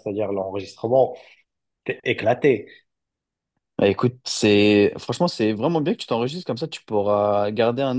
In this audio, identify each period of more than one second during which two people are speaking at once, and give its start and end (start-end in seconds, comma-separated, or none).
none